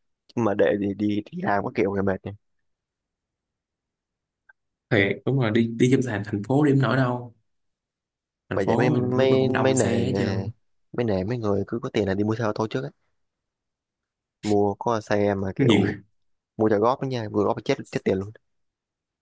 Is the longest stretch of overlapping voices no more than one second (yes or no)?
no